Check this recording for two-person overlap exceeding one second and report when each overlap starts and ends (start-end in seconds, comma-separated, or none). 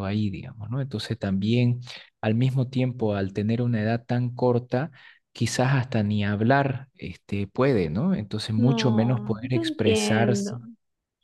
8.6-10.6